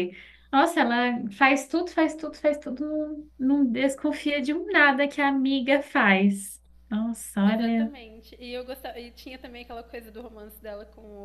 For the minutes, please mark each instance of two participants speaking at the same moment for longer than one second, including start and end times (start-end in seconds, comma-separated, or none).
none